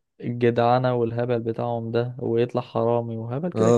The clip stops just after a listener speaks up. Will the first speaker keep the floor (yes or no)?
no